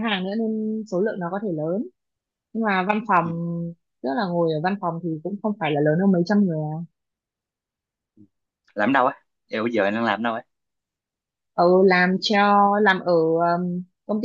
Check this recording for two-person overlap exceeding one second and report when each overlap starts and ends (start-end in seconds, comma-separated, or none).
none